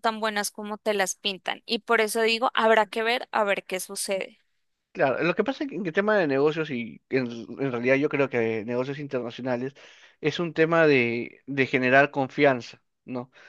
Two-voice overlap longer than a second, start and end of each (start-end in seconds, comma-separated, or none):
none